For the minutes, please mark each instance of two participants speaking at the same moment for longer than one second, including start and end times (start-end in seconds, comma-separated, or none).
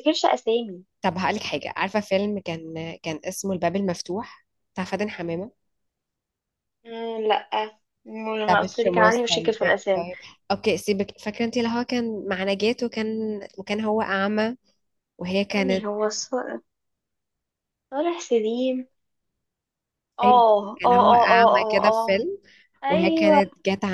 8.4-10.1, 20.2-22.2